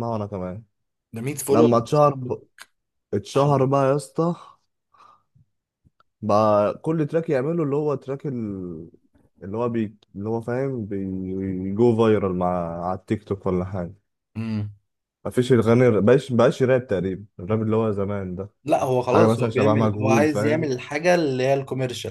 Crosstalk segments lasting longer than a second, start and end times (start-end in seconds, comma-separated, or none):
19.1-20.7